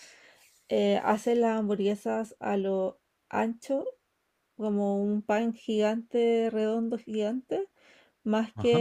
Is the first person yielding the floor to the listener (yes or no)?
no